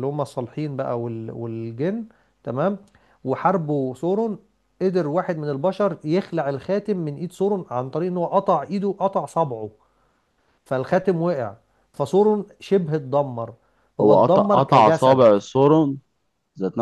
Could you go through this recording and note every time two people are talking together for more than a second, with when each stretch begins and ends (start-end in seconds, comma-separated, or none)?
14.0-15.2